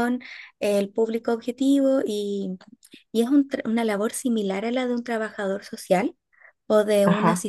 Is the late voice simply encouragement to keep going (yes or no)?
yes